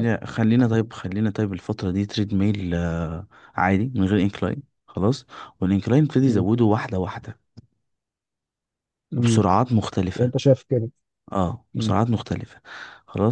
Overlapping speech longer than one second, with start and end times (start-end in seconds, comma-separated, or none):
none